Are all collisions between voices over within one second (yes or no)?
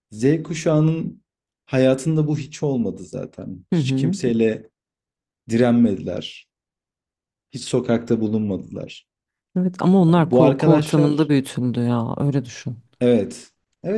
no